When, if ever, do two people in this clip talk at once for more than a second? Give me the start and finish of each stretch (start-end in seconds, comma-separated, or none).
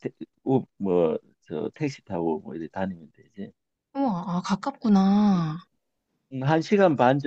none